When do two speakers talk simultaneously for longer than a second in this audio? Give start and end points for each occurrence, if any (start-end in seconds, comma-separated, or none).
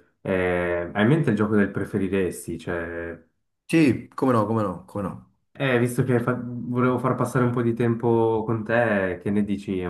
none